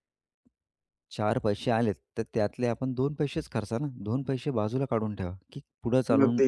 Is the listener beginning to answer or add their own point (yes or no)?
no